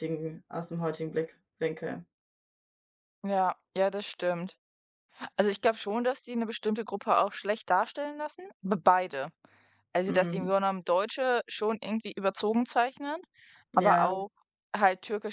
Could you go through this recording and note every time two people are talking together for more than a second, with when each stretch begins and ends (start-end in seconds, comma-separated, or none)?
none